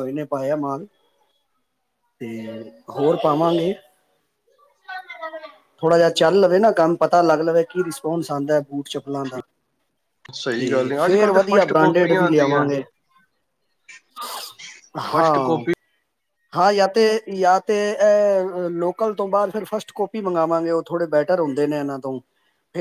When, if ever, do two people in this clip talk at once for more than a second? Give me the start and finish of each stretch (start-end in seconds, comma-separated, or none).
10.6-12.7